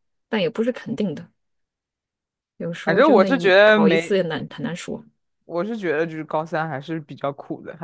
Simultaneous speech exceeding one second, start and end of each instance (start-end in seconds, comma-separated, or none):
2.9-4.2